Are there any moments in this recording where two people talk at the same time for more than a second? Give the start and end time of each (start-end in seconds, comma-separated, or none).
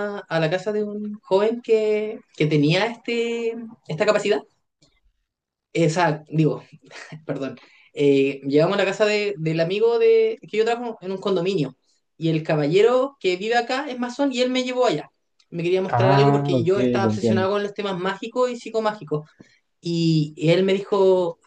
15.9-17.5